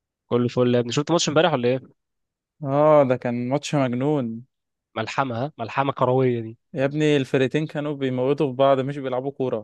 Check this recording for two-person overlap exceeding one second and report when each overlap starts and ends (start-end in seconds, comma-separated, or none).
none